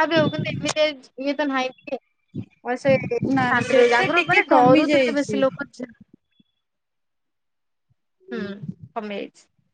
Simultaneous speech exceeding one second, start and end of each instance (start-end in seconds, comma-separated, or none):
3.4-5.4